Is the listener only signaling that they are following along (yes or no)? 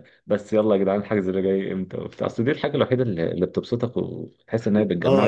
no